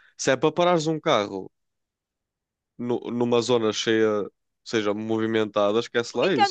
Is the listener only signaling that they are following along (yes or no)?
no